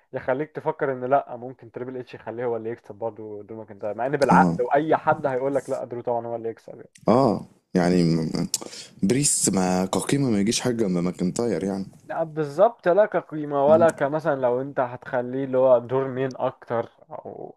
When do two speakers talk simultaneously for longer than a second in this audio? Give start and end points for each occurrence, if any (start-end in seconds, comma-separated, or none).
none